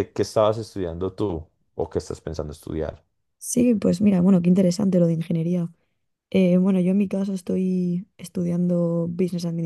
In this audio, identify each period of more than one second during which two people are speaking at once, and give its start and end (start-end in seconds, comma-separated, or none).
none